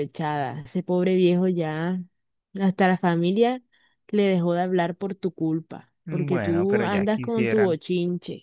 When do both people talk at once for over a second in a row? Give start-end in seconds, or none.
6.0-7.8